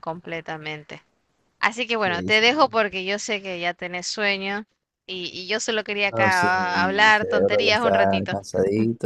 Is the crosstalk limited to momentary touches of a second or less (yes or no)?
no